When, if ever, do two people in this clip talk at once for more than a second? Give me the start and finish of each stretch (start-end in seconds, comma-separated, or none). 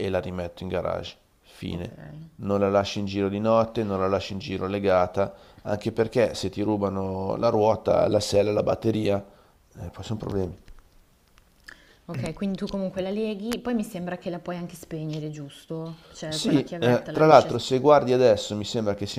16.3-17.8